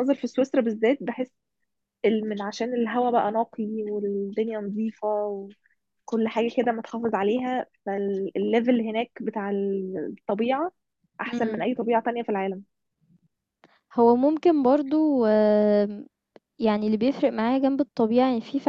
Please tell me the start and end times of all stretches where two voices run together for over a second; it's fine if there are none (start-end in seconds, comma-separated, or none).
none